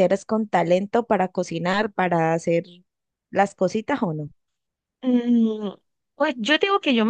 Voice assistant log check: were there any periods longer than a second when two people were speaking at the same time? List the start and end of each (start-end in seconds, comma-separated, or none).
none